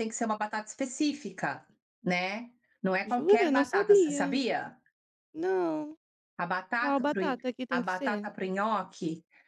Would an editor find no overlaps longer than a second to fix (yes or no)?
no